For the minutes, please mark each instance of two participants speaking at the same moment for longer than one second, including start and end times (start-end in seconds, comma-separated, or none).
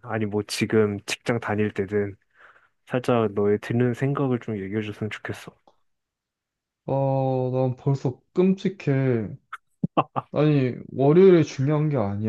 none